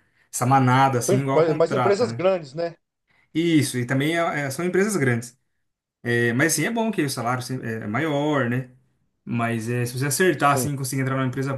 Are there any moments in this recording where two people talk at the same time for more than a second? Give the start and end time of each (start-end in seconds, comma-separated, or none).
1.0-2.3